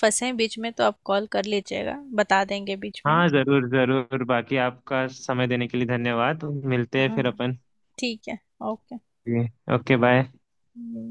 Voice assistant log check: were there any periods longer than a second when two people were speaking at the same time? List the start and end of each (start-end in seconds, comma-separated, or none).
none